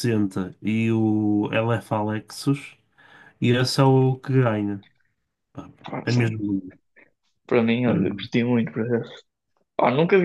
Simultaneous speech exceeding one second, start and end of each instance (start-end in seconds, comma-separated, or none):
none